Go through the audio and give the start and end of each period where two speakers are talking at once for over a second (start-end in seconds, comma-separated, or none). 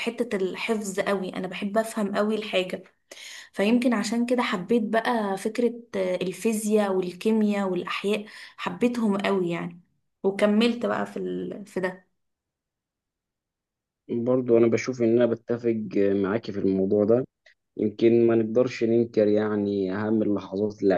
none